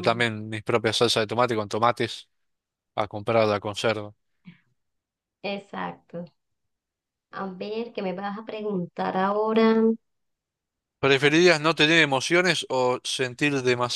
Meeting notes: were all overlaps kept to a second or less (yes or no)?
yes